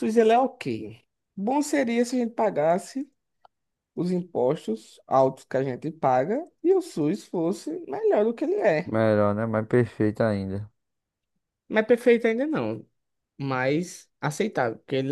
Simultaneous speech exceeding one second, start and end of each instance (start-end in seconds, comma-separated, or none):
none